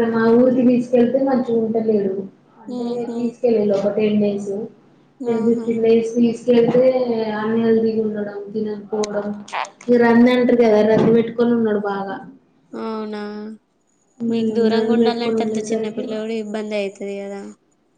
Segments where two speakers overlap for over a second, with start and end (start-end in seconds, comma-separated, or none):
14.3-16.0